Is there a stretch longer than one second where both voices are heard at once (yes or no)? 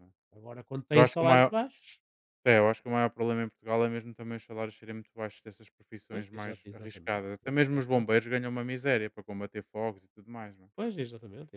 yes